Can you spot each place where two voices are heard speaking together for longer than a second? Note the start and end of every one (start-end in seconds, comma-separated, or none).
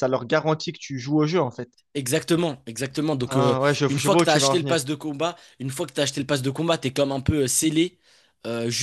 3.3-4.8